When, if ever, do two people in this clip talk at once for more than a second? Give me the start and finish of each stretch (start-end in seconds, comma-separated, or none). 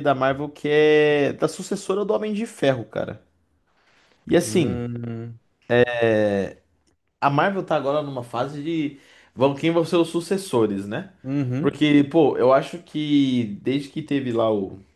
none